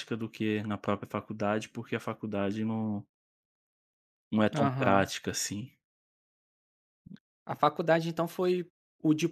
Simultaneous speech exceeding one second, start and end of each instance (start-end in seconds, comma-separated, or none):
none